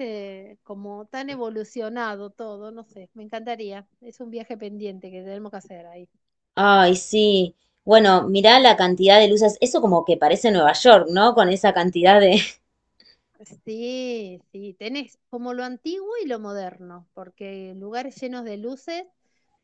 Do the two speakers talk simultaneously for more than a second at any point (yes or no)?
no